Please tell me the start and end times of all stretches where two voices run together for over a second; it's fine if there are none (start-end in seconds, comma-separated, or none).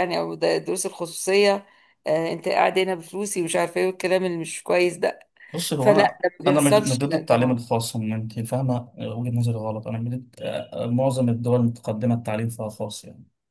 5.8-7.6